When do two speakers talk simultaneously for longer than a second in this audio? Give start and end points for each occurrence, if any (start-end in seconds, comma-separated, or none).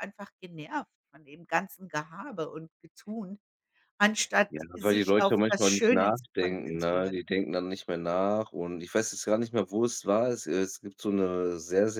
4.5-7.2